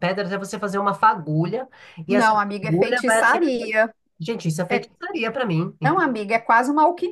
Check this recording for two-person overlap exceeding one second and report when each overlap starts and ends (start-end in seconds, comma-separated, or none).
2.1-3.7